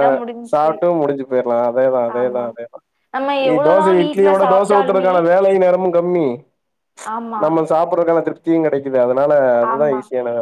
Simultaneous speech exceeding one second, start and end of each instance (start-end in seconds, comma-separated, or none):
3.5-5.1